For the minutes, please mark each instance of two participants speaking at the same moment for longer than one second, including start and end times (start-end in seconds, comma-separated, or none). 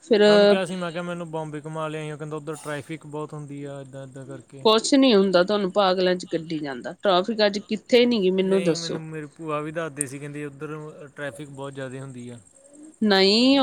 none